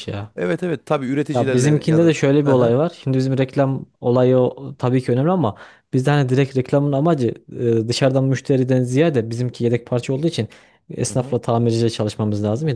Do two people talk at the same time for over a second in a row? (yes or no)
yes